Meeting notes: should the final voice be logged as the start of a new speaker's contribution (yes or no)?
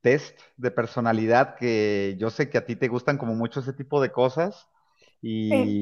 no